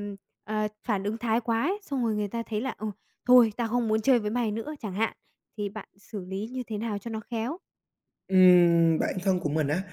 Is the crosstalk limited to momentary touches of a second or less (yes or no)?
yes